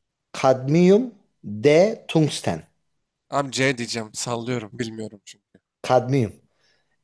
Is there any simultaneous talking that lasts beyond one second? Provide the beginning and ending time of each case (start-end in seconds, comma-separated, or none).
none